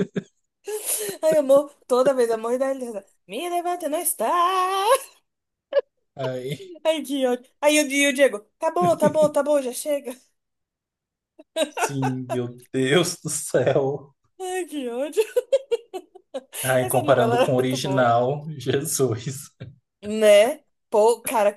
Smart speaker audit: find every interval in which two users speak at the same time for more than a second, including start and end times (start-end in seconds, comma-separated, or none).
16.8-18.1